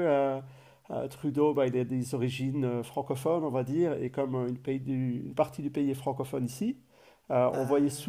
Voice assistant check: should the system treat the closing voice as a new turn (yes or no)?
no